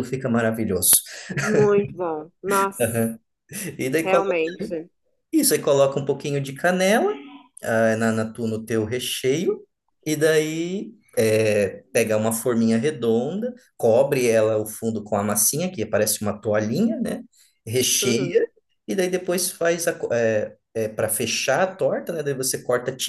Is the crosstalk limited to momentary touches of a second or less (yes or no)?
yes